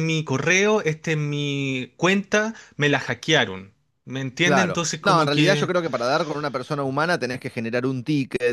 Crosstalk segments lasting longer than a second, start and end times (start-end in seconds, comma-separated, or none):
4.4-5.7